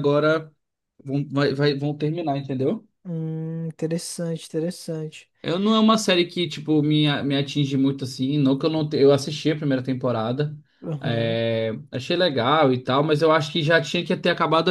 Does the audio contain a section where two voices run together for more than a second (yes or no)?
no